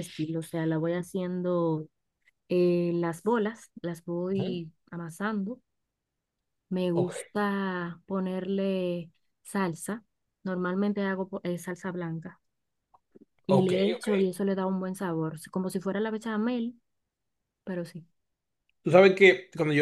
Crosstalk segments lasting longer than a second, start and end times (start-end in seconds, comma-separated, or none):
none